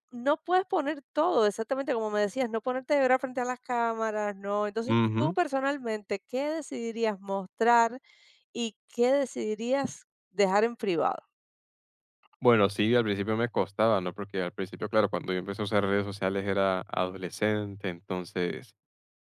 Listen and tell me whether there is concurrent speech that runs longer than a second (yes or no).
no